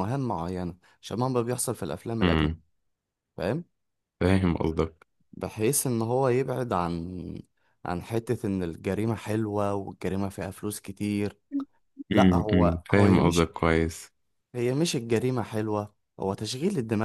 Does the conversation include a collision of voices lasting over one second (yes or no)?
yes